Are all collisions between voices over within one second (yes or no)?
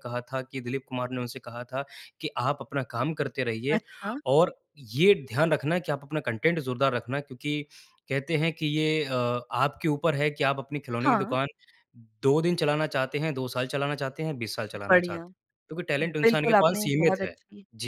no